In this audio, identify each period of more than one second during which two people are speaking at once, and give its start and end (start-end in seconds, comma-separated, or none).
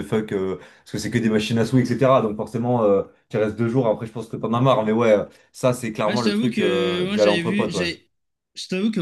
6.0-7.9